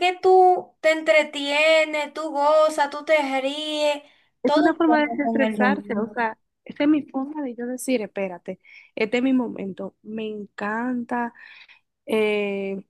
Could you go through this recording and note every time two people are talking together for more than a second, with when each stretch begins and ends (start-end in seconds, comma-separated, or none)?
4.4-6.1